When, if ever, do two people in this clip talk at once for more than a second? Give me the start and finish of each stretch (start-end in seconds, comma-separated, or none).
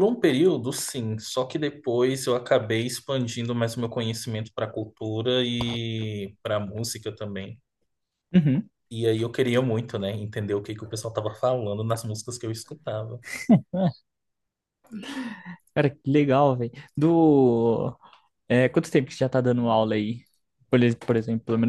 none